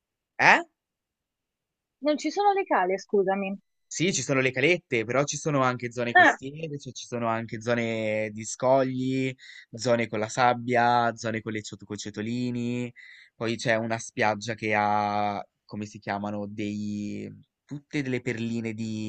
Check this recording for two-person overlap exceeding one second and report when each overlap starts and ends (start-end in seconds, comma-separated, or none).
none